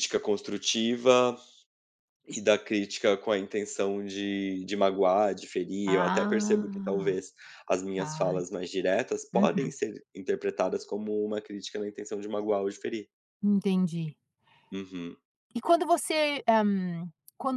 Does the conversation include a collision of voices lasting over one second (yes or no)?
yes